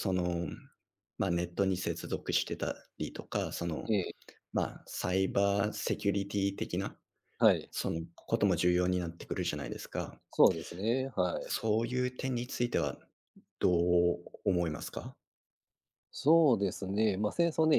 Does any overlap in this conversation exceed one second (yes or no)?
no